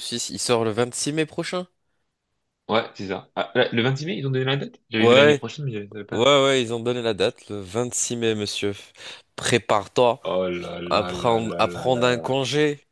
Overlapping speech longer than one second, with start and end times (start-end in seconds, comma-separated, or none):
10.9-12.2